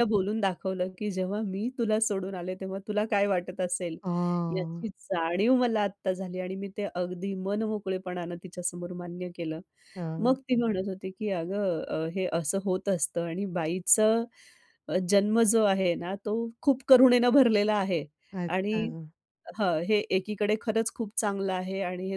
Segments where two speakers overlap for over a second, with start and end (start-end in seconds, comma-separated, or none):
none